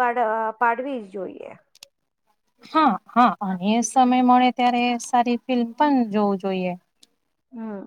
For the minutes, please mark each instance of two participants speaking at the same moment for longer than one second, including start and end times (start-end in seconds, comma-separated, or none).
none